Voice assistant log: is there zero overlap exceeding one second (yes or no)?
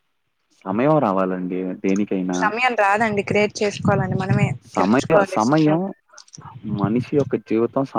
yes